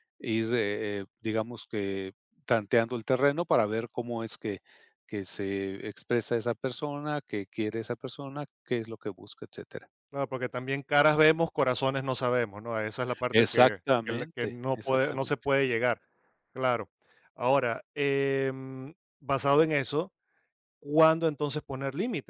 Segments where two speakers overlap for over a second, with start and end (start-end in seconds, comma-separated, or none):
13.3-15.5